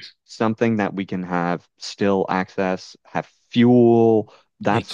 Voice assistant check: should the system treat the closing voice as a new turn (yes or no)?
no